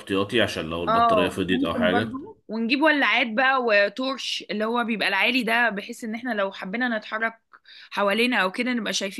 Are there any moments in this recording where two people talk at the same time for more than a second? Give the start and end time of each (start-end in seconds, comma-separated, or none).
0.9-2.2